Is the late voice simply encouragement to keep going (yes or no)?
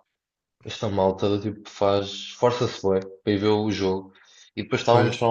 yes